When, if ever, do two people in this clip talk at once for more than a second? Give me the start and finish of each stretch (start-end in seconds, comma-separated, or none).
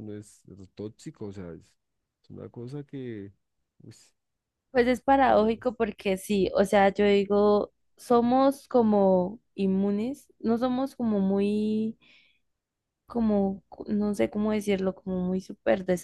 none